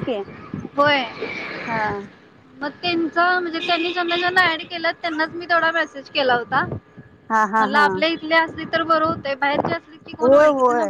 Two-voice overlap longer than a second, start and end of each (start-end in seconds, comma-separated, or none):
none